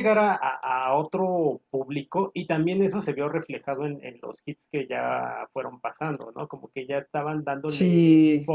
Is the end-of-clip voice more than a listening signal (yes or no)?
no